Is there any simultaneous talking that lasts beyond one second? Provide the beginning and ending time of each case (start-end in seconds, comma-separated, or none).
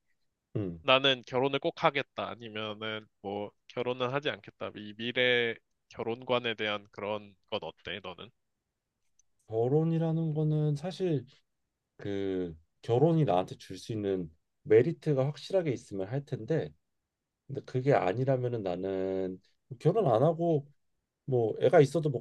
none